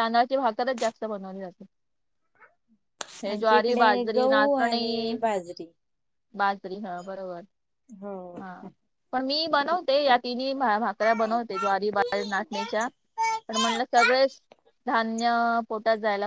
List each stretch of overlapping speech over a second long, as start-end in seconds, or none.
3.3-5.2